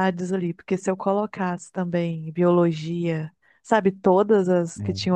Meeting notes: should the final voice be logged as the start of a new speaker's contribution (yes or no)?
no